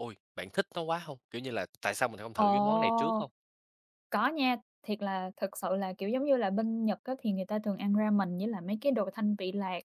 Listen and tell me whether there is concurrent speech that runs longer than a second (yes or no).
no